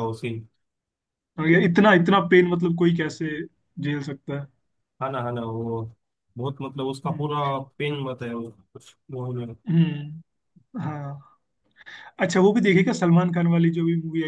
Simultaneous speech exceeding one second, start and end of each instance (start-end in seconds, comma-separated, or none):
none